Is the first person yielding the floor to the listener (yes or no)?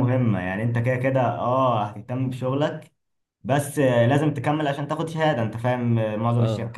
no